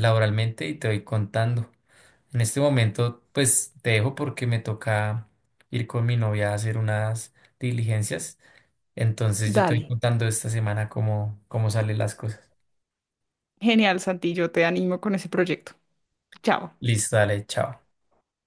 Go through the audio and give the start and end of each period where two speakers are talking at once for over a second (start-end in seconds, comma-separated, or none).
none